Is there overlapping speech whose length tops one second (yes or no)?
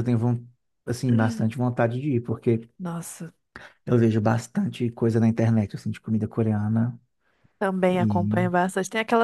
no